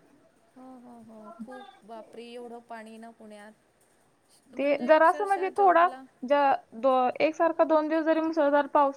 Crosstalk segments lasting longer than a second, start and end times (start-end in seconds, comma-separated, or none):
4.6-5.8